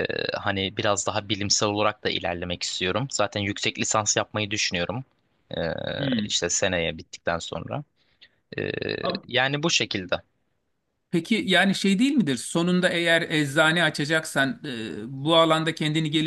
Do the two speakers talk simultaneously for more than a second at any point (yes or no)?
no